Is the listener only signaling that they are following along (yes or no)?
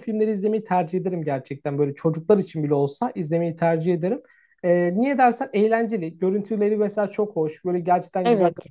yes